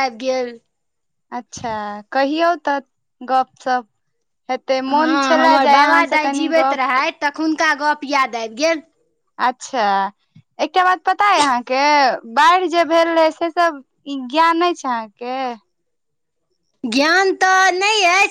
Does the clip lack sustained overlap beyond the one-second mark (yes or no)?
no